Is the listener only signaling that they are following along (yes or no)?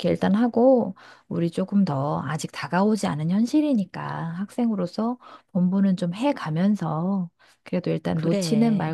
yes